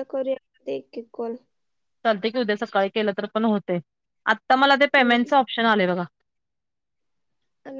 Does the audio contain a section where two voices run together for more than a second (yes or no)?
no